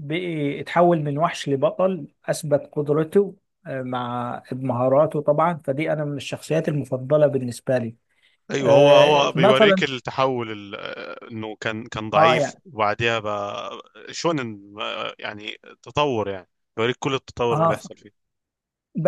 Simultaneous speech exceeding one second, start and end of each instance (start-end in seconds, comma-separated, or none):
8.6-9.8